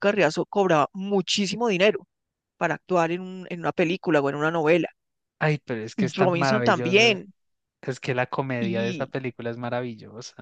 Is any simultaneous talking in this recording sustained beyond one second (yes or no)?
yes